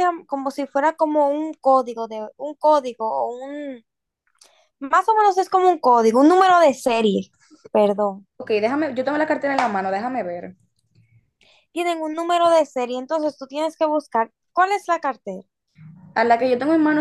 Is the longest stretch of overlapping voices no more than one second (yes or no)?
yes